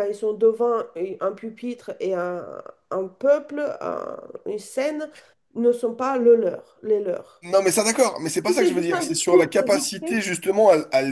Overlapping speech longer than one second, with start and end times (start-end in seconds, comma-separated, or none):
8.5-10.2